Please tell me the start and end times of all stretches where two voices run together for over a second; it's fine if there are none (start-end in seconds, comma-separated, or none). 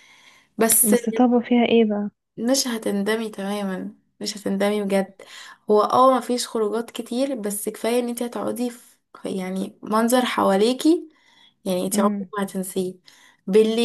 none